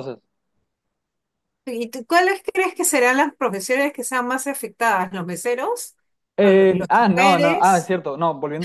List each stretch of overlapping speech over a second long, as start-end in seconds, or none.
6.4-7.9